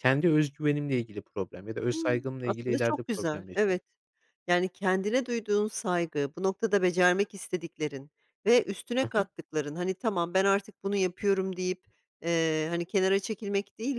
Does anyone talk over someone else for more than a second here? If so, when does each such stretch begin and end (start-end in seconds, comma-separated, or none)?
1.9-3.8